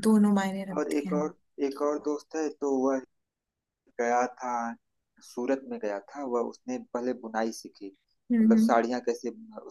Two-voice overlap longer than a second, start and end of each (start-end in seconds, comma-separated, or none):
none